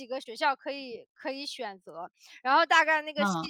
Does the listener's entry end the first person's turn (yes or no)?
no